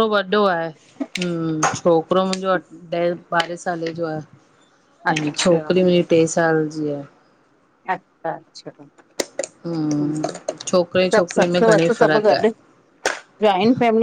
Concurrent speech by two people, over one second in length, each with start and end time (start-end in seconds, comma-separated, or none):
11.1-12.5